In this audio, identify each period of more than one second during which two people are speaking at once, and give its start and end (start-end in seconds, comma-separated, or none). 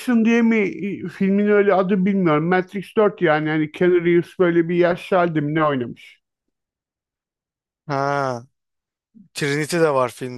none